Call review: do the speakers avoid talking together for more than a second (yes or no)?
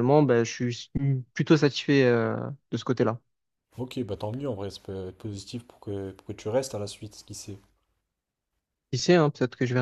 yes